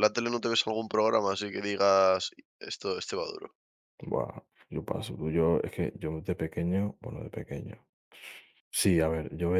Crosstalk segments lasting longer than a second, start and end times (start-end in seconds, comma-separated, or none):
none